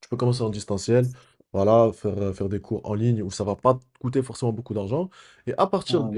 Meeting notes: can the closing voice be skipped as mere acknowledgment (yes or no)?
yes